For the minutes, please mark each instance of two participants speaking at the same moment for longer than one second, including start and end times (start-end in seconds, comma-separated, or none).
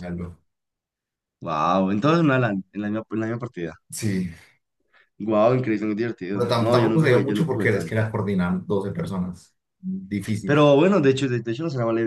6.3-8.1